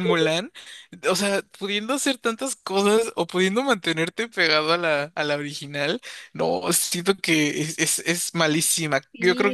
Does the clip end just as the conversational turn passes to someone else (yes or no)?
yes